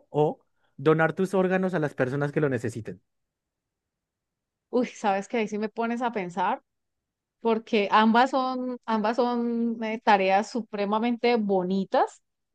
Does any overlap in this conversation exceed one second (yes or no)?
no